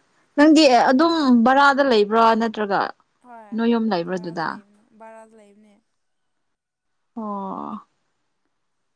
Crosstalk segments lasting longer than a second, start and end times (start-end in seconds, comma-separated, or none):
none